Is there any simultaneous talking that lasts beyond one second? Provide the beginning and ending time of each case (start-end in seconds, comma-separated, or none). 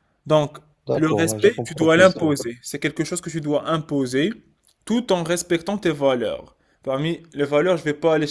0.9-2.4